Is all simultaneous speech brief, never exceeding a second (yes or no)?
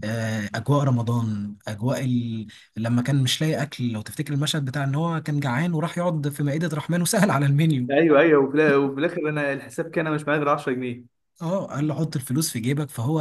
yes